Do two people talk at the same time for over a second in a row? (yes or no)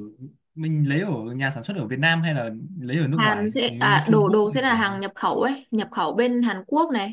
yes